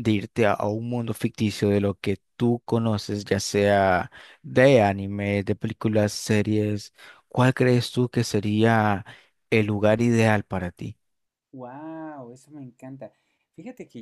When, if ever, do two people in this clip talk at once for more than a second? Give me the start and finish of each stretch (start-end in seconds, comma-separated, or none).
none